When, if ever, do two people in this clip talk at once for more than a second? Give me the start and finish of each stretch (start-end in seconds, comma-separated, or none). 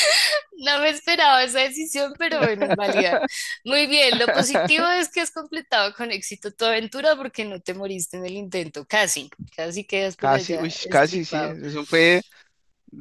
10.2-11.6